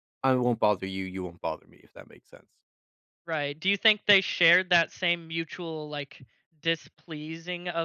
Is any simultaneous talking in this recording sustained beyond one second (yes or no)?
no